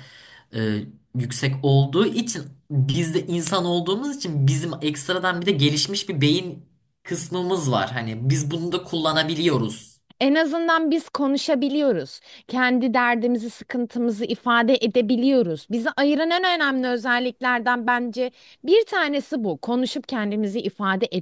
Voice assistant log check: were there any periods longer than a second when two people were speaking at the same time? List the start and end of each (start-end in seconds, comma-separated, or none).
none